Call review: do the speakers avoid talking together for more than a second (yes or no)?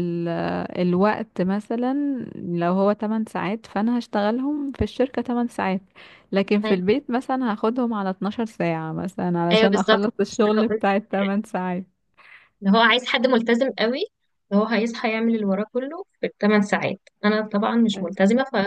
no